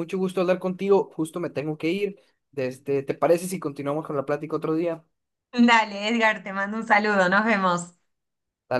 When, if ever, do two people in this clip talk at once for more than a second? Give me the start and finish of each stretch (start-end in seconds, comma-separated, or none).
none